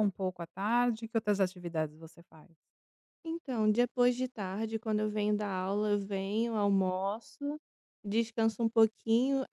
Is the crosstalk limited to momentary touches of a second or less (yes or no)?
yes